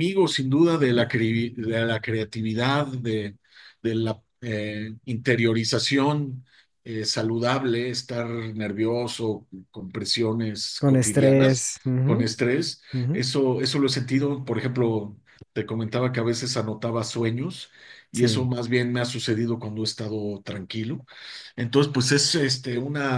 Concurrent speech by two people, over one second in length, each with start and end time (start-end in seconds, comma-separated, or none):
10.8-12.3